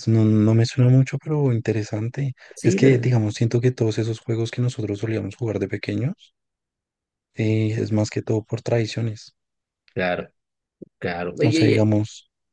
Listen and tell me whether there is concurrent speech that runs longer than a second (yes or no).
no